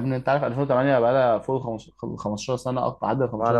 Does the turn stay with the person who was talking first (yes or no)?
no